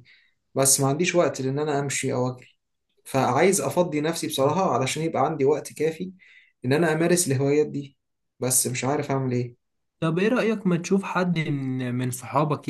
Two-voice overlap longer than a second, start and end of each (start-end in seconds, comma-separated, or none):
none